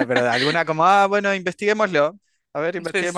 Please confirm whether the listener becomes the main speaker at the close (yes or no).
no